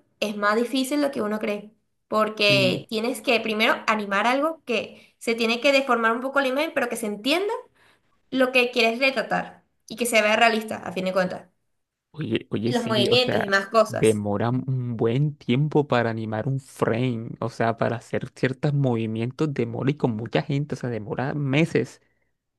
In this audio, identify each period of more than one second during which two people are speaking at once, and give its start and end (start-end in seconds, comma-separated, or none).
12.7-14.2